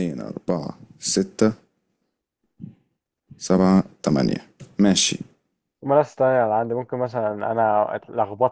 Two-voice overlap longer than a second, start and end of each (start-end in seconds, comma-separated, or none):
none